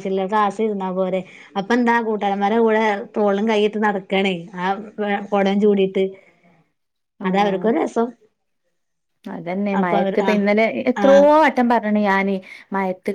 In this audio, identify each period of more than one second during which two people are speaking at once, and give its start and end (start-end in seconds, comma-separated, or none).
none